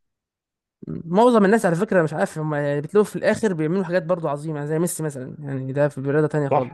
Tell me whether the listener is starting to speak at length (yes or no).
yes